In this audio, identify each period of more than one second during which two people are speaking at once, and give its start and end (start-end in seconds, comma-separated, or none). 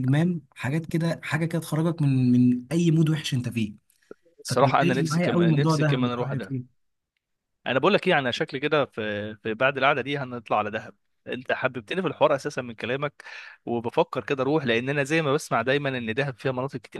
4.5-6.5